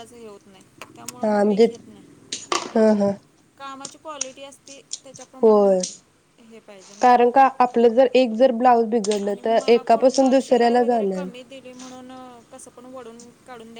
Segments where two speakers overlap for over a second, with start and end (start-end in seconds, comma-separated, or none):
none